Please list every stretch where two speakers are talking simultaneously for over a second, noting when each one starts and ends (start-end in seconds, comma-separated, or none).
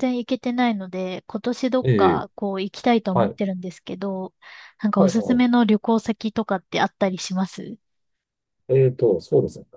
none